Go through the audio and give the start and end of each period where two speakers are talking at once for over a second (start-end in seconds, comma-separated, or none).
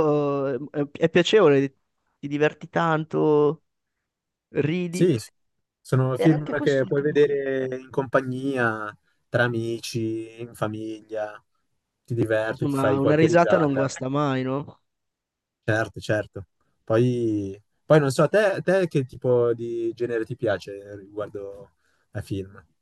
6.2-7.5, 12.5-13.9